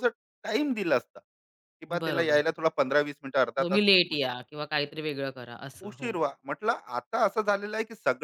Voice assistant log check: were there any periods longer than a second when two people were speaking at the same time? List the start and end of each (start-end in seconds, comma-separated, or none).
none